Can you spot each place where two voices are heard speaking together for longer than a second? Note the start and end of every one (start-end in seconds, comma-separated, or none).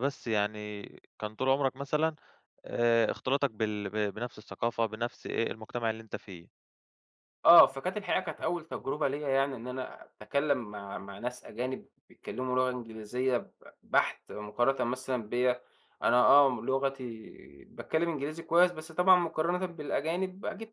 none